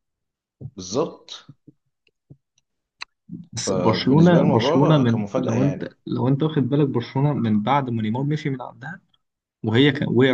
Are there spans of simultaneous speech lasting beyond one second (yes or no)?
yes